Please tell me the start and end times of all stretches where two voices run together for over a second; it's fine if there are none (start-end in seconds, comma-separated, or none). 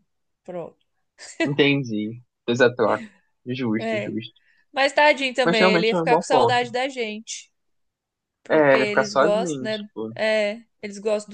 5.5-6.7, 8.5-10.2